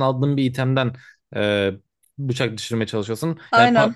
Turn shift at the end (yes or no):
no